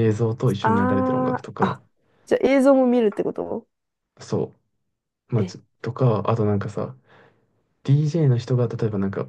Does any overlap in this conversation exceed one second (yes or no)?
yes